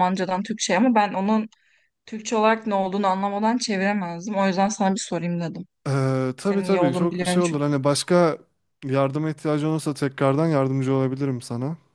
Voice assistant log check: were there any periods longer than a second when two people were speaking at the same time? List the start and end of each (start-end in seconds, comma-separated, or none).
6.4-7.8